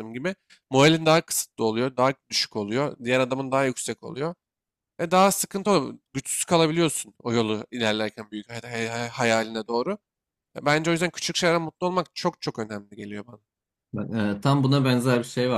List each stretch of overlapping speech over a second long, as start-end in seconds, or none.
none